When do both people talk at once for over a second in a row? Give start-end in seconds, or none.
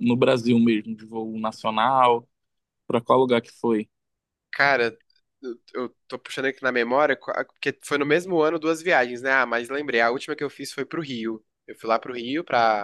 none